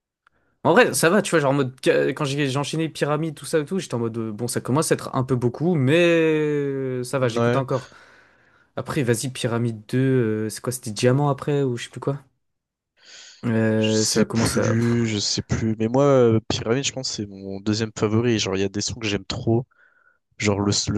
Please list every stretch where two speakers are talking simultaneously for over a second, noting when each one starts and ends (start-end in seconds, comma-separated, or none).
13.8-15.1